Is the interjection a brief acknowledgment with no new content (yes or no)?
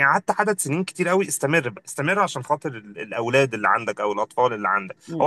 no